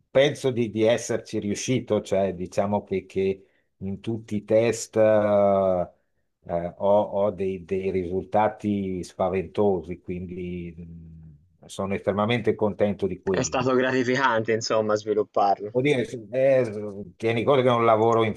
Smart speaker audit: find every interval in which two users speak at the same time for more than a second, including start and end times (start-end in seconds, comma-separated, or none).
none